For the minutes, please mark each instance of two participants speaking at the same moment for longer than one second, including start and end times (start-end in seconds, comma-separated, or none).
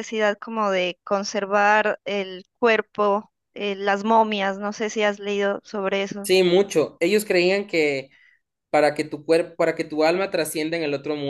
none